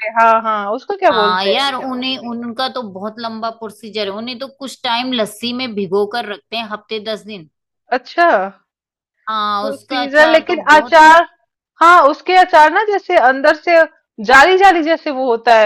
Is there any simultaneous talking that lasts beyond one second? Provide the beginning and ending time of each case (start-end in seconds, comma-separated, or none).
9.6-11.0